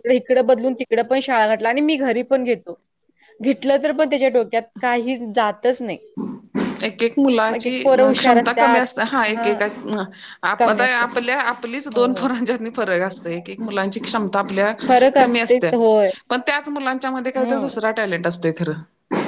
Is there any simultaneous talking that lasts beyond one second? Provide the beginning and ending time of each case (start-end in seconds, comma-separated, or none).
none